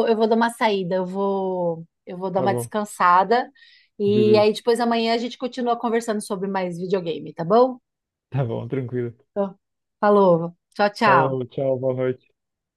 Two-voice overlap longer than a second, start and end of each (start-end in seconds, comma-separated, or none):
none